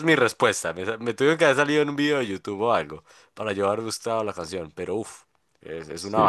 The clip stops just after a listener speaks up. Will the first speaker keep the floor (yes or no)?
no